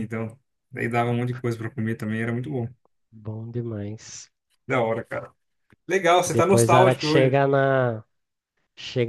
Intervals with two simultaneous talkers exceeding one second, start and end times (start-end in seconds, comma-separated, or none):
6.2-7.4